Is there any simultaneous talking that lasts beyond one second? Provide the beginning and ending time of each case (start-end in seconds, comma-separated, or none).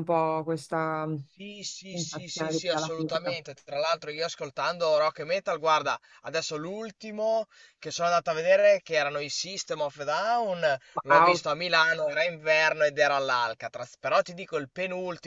1.9-3.4